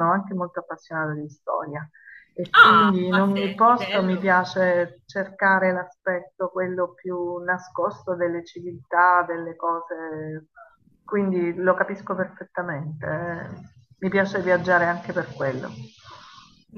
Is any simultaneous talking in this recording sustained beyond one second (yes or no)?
yes